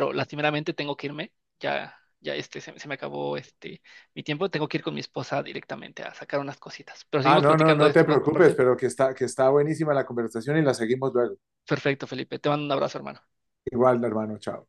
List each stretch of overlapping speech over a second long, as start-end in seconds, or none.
7.2-8.6